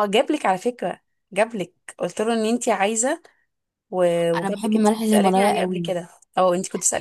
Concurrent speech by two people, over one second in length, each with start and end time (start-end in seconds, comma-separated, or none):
4.3-5.9